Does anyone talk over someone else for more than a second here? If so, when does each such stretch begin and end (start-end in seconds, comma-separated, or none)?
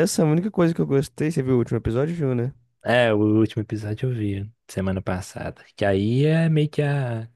none